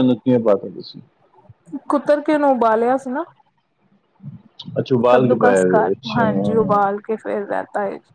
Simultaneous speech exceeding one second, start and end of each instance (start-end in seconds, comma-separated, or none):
5.1-7.0